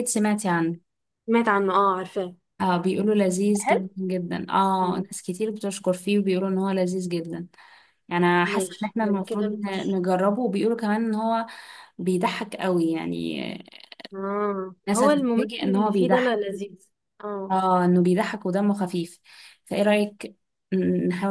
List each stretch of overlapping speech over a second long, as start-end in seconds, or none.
8.5-10.0, 14.9-16.4